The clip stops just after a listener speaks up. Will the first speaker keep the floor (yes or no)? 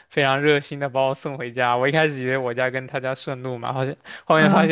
yes